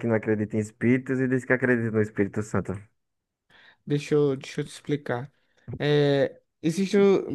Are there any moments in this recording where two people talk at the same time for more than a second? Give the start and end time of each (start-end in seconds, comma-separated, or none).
none